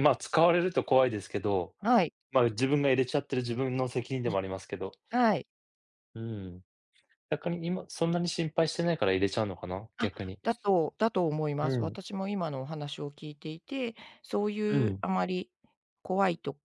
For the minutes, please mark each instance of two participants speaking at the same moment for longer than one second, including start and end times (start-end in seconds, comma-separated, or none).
none